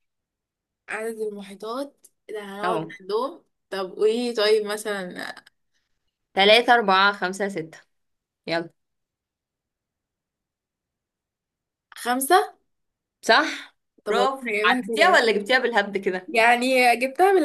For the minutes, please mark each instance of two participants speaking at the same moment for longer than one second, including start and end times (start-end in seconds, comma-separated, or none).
14.1-15.3